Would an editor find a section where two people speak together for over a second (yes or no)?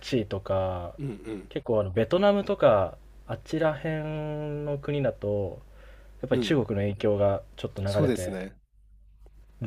no